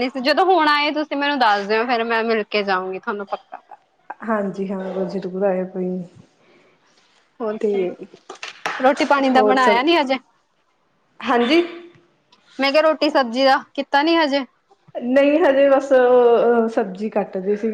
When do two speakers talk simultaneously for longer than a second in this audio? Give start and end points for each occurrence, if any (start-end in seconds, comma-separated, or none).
none